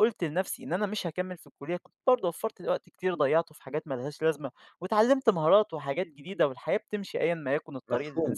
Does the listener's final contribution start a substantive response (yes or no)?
yes